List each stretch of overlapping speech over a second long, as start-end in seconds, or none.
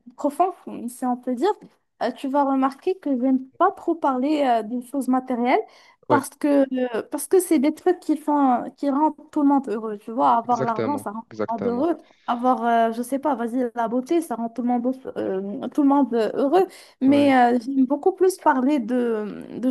10.4-11.9